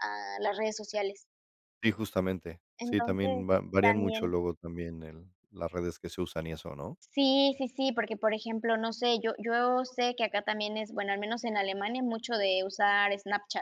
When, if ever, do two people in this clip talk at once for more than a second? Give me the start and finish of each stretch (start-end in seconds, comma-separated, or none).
2.8-4.3